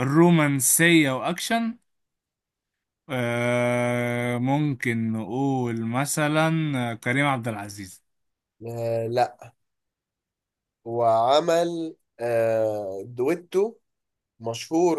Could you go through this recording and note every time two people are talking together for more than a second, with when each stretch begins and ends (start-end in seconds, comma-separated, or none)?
none